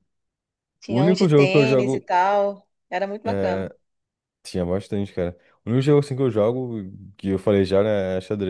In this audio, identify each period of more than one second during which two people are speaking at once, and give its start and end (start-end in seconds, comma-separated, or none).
0.9-2.1